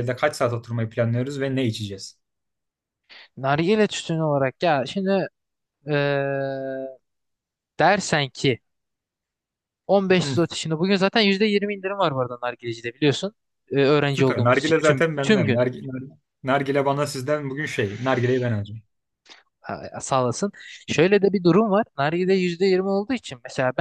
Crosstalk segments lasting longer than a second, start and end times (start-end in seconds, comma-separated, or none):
14.1-15.6